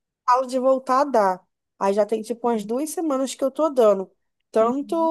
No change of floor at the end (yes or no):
yes